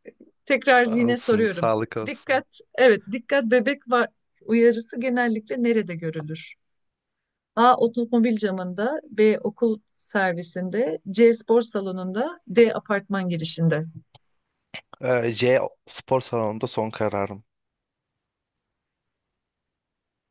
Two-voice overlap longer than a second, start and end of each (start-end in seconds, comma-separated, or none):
1.1-2.4